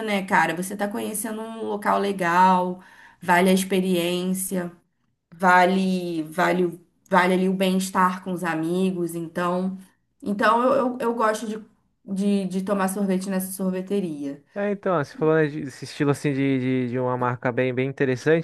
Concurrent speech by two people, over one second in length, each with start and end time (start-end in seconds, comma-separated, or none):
none